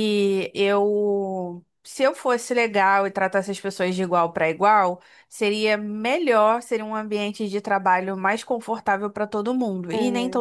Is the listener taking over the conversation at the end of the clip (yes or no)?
yes